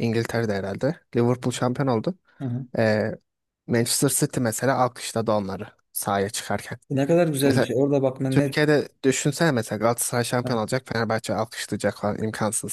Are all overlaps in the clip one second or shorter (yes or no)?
yes